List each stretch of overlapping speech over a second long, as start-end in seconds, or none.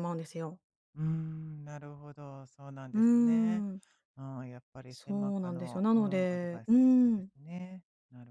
4.9-7.3